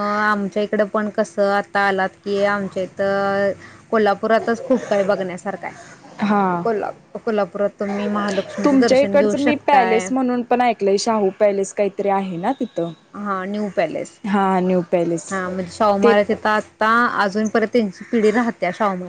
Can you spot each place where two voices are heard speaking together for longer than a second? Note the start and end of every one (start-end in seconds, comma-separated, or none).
8.6-10.1